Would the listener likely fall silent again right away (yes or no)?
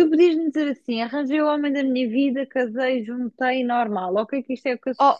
yes